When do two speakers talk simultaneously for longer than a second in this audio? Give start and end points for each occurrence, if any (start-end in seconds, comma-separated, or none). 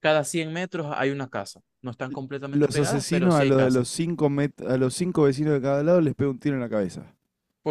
2.1-3.9